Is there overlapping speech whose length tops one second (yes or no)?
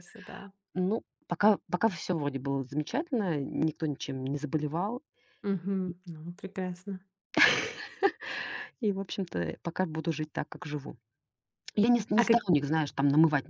no